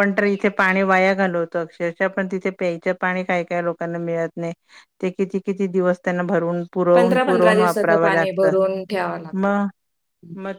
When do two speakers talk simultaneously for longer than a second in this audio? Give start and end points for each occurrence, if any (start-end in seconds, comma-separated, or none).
7.0-8.5